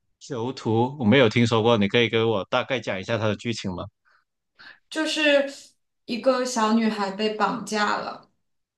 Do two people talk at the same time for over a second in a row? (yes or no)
no